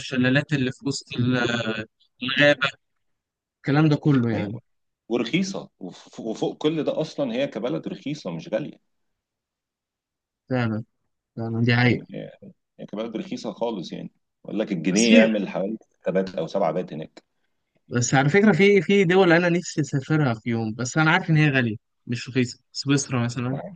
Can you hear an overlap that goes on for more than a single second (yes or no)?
no